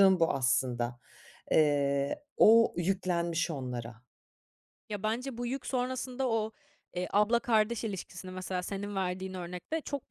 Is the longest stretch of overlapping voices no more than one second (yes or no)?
yes